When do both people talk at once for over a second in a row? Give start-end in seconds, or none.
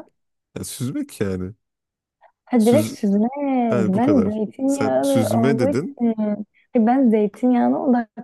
4.0-5.9